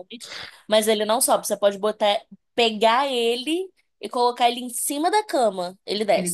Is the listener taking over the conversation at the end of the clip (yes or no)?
yes